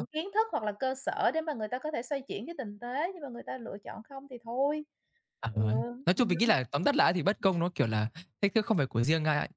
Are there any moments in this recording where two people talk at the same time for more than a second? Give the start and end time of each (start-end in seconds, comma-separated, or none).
none